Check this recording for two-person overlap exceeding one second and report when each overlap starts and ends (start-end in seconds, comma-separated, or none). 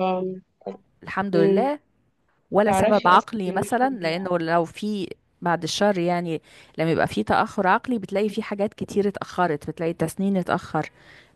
2.7-4.2